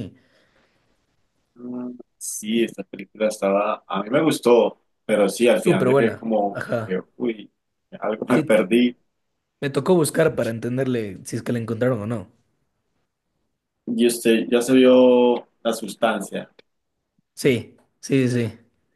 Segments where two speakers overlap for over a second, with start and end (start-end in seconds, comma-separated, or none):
5.5-7.0